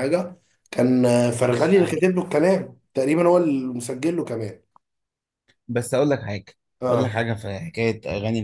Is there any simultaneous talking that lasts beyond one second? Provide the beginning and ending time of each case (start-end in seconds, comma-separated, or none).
none